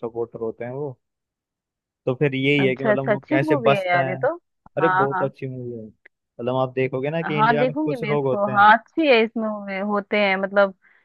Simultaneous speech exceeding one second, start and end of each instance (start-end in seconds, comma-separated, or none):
2.6-4.2, 7.2-8.7